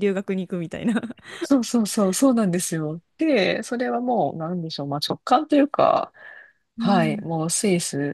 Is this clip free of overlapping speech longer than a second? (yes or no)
yes